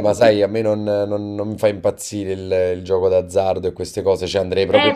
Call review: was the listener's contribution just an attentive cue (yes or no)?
no